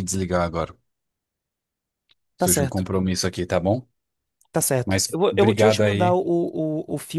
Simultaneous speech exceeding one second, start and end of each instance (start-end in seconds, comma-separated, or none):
4.8-6.2